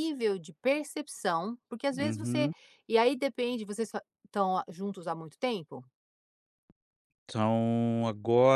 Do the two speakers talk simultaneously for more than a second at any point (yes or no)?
no